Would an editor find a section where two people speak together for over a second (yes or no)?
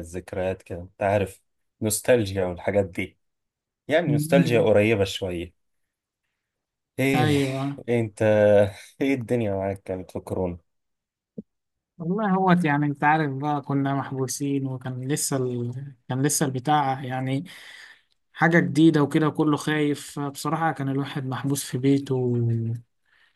no